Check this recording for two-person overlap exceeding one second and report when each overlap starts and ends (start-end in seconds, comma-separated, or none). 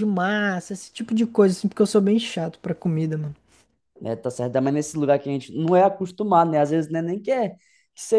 none